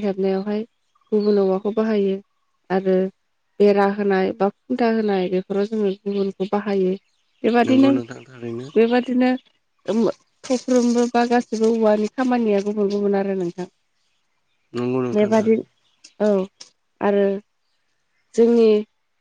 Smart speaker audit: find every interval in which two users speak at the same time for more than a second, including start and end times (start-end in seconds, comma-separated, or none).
none